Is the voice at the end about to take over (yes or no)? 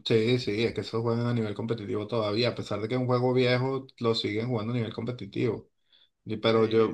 no